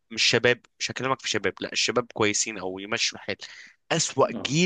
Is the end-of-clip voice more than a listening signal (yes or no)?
no